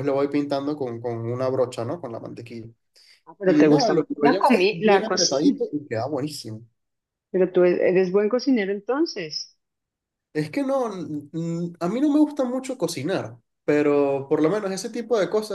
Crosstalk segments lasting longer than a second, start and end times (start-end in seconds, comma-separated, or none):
3.4-5.6